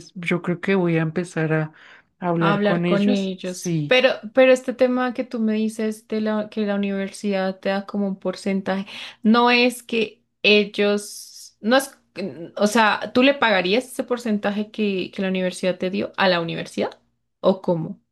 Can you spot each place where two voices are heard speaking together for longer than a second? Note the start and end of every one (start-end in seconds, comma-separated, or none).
2.4-4.0